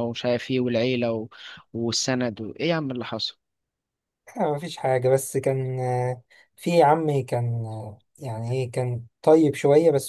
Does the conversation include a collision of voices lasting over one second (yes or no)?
no